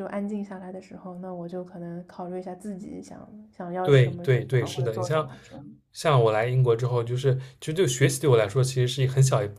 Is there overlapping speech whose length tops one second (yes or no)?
yes